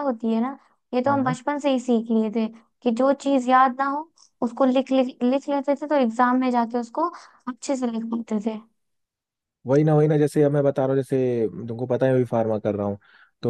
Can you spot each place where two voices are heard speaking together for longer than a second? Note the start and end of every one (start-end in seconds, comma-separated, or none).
none